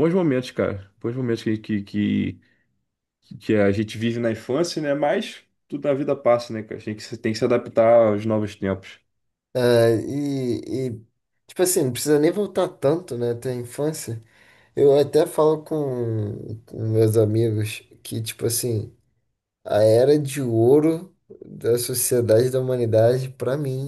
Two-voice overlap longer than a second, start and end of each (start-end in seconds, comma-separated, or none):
none